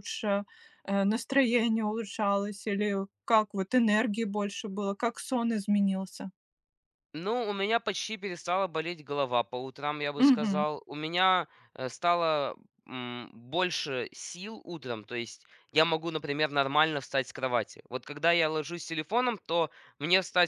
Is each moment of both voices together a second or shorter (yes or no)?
yes